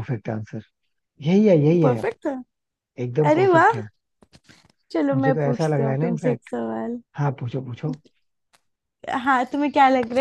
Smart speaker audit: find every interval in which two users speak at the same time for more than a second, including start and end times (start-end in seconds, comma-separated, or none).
5.1-6.5